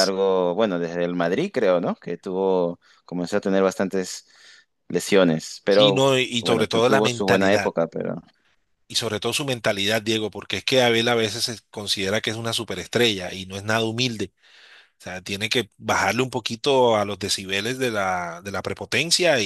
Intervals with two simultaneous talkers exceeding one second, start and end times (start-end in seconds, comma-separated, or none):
5.7-7.7